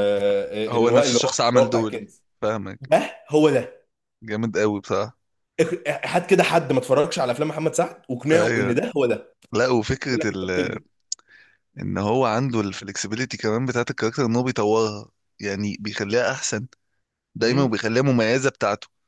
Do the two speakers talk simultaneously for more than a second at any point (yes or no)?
yes